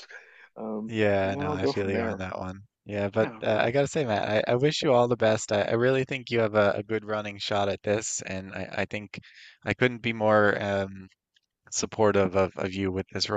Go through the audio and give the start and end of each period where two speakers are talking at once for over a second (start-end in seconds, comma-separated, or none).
0.9-2.2